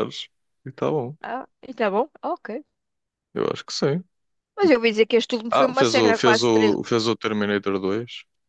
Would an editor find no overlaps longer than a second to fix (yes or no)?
no